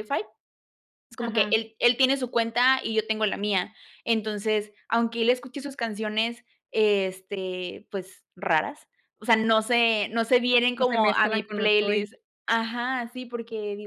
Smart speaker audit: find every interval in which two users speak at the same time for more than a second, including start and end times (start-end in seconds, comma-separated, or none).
10.8-12.0